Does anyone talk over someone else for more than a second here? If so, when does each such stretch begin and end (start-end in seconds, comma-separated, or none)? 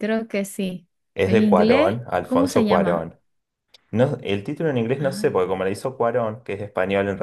1.2-3.1